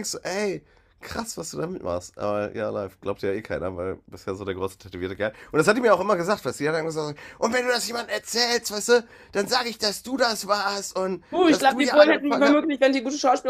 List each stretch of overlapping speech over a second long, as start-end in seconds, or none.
11.3-12.6